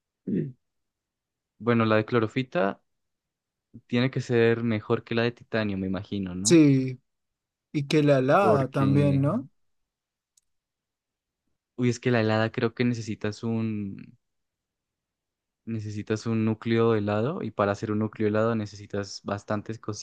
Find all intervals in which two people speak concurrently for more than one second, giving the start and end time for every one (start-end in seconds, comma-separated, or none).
none